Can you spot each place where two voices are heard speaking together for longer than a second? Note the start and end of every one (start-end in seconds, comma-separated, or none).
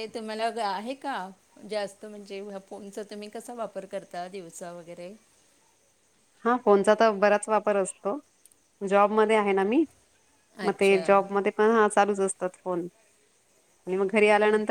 none